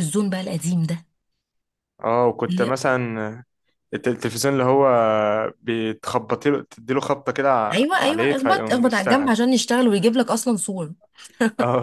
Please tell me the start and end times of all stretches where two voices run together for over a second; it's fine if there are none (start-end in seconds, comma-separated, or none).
7.7-9.3